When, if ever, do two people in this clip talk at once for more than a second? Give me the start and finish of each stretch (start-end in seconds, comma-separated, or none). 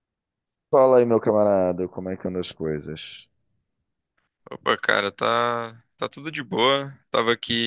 none